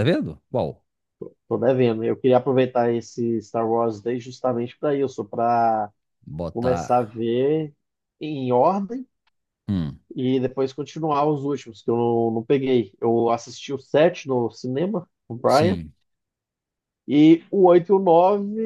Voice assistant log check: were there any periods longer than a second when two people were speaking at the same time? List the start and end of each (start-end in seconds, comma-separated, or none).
none